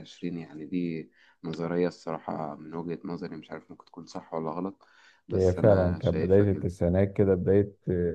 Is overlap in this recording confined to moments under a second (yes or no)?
no